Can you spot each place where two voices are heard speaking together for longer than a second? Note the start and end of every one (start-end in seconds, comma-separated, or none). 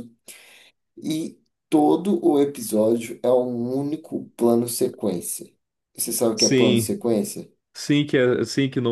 none